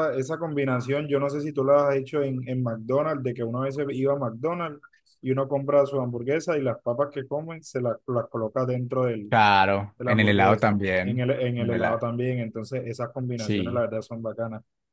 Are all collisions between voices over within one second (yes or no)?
no